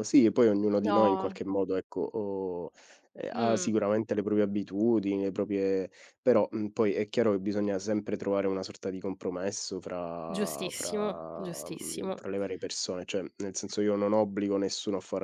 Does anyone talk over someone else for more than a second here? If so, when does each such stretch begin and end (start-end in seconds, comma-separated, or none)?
10.3-12.2